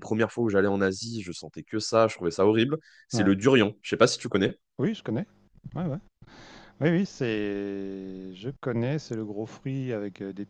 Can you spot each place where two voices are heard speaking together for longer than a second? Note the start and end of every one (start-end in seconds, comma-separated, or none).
none